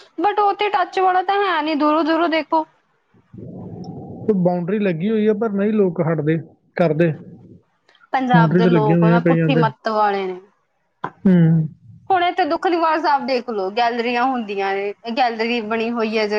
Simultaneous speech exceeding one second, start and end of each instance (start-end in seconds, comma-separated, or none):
8.3-9.6